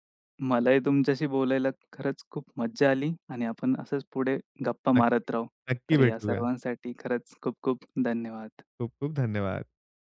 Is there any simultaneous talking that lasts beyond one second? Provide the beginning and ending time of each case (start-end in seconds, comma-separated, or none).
none